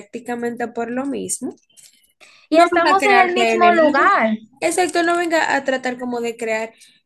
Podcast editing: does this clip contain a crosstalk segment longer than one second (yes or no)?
yes